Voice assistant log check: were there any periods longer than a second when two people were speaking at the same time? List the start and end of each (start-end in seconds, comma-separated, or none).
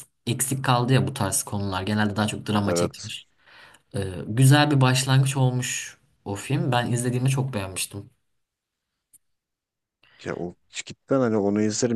none